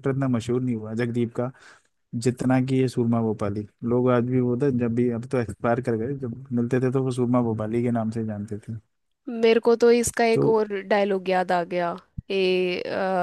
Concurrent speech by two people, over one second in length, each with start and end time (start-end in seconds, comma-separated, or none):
none